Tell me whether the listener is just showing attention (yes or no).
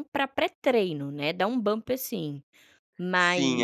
no